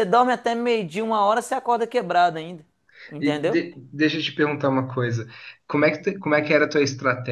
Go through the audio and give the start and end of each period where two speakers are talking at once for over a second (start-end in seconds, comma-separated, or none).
none